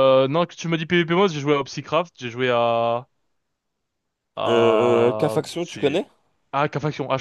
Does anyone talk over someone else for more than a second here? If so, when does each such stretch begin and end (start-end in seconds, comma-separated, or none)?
4.5-6.0